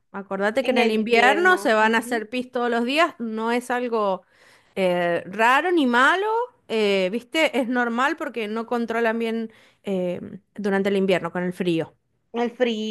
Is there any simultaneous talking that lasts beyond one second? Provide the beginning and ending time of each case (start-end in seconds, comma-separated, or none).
0.6-2.3